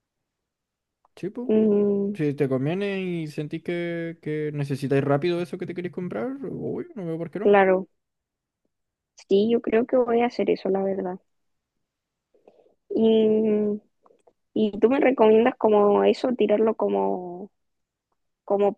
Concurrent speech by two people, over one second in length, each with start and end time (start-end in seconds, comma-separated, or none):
none